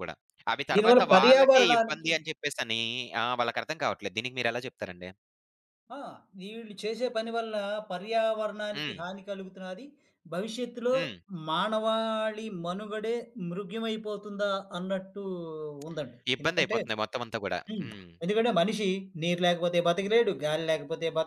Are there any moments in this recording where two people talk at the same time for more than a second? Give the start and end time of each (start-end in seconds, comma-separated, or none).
0.7-2.1